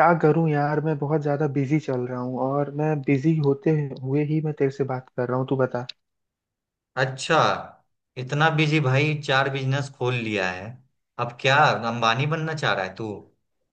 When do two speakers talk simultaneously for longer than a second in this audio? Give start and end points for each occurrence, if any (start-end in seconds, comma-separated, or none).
none